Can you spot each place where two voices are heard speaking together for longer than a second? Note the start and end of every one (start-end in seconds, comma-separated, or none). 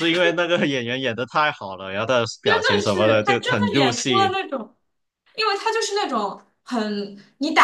2.4-4.3